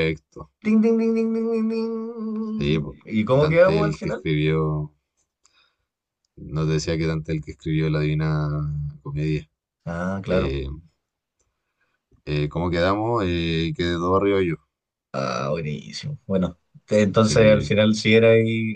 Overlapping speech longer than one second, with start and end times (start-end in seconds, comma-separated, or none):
2.6-4.2